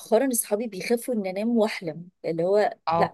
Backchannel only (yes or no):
no